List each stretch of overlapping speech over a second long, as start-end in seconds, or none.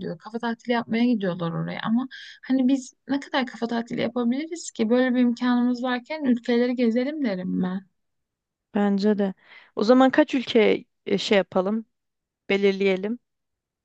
none